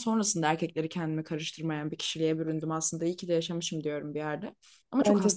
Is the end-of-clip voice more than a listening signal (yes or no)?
no